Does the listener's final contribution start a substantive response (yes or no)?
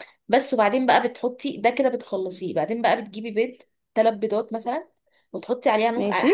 no